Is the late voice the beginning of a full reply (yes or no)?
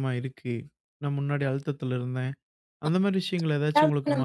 yes